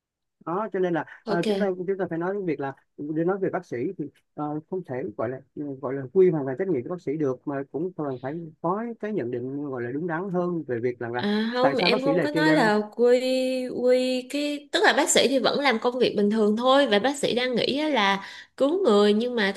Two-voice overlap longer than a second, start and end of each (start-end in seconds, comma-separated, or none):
11.2-12.7